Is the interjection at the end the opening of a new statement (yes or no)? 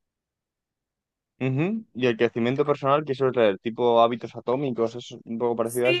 yes